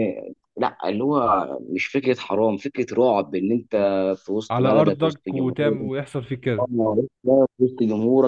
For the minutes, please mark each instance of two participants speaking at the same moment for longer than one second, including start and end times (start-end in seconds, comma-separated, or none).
4.5-5.8